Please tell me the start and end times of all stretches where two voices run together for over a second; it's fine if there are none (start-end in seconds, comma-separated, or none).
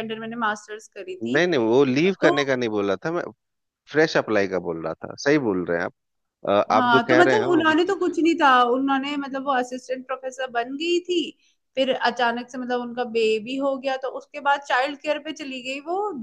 6.7-8.3